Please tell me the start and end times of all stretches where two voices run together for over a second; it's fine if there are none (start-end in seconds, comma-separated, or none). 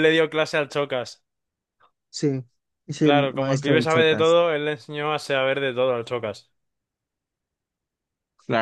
3.0-4.4